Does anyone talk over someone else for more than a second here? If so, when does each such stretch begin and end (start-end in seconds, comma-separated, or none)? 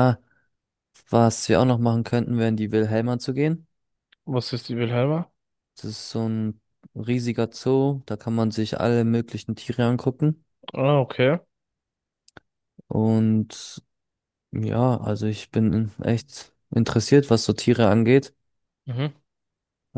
none